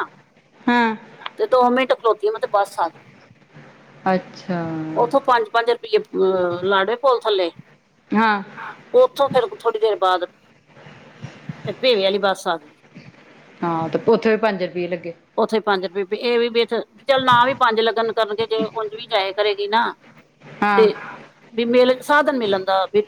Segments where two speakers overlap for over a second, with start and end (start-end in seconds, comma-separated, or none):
none